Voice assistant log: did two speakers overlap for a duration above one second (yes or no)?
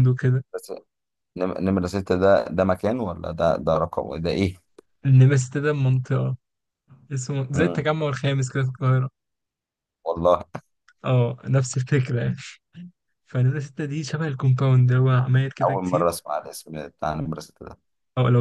no